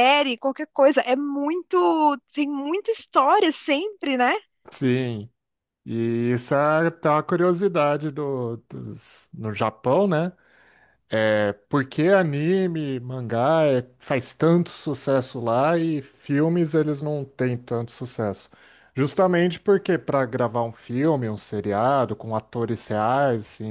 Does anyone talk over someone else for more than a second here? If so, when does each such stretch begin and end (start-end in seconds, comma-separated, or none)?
none